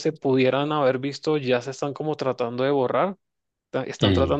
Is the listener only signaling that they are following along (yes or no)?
yes